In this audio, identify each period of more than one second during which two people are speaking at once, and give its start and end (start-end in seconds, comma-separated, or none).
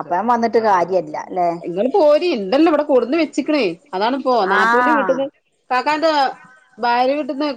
none